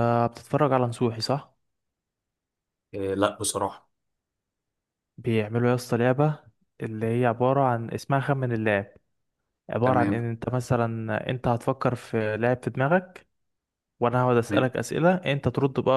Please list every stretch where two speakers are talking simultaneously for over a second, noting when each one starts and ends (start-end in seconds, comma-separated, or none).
none